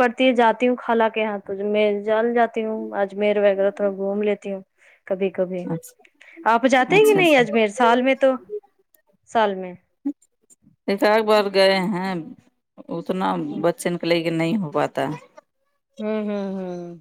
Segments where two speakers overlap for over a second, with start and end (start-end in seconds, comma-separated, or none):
none